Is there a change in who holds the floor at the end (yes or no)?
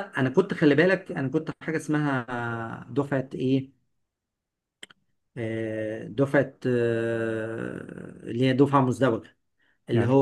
no